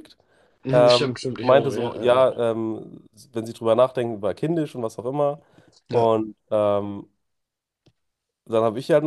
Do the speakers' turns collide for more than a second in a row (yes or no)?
yes